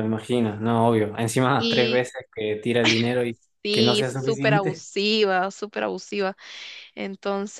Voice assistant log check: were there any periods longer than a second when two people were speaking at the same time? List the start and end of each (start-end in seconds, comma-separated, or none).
3.6-4.9